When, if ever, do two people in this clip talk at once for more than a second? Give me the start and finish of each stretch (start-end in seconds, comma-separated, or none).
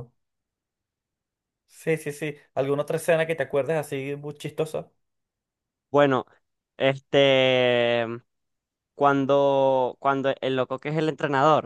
none